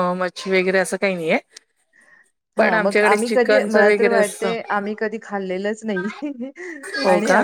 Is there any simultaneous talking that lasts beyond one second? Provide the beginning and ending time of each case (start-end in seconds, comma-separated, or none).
2.6-4.5